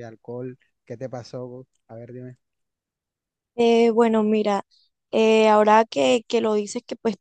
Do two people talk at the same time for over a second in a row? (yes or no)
no